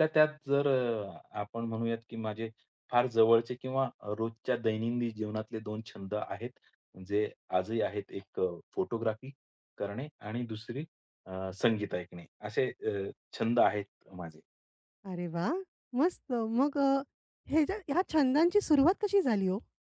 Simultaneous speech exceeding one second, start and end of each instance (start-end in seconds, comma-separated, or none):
none